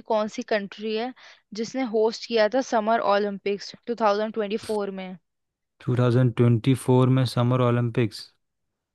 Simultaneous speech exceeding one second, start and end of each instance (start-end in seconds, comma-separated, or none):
none